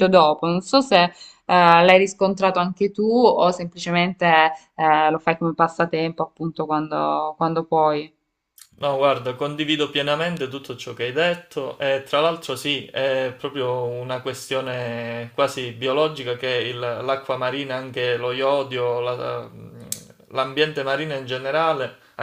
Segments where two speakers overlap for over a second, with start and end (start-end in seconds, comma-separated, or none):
none